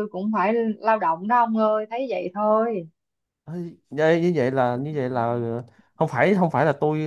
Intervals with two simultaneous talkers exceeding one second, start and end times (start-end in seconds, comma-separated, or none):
none